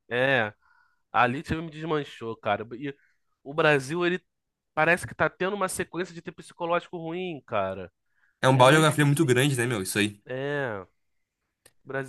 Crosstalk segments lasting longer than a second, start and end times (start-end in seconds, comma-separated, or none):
8.5-9.9